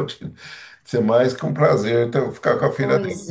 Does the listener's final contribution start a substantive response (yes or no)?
no